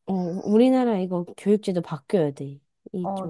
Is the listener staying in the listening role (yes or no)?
no